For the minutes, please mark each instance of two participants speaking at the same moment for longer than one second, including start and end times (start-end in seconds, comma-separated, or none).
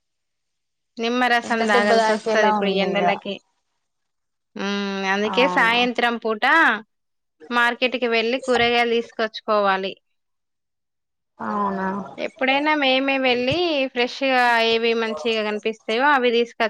1.4-3.0